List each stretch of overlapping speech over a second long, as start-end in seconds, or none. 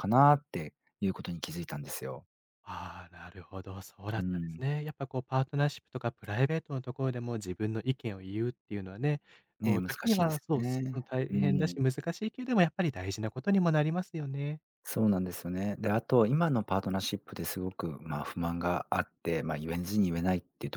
9.6-11.8